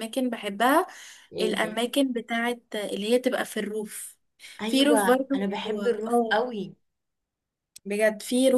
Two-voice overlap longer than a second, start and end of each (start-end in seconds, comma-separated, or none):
4.7-6.4